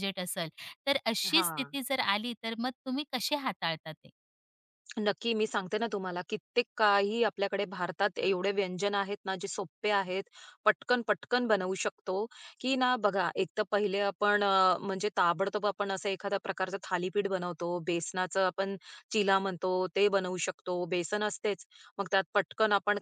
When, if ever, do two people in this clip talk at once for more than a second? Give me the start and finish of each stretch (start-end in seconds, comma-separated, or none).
none